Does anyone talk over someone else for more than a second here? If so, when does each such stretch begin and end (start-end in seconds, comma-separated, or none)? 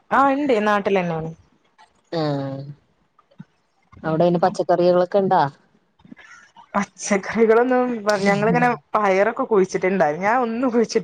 none